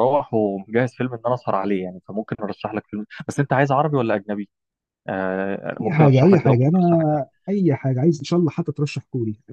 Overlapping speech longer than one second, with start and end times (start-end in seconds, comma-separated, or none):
5.8-7.2